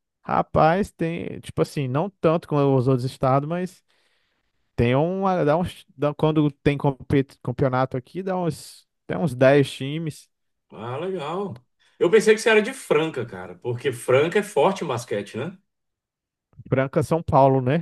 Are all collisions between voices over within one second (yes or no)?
yes